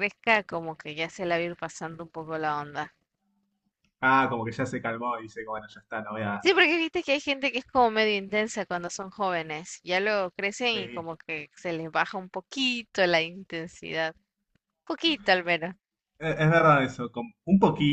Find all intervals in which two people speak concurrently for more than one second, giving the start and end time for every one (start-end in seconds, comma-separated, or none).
none